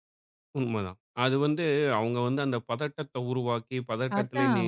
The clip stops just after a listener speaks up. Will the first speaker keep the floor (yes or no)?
yes